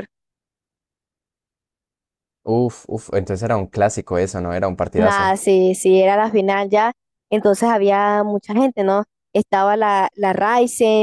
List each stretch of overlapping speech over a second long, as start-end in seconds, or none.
none